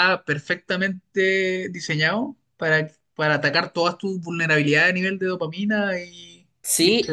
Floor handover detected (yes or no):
yes